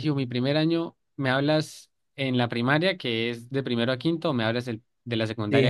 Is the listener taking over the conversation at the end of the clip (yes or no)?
yes